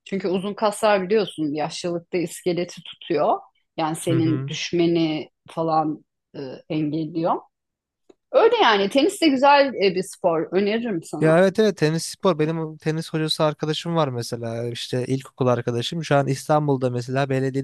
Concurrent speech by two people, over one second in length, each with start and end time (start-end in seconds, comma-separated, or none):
none